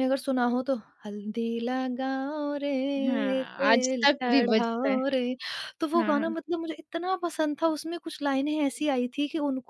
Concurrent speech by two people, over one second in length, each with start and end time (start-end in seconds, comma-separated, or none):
3.1-5.0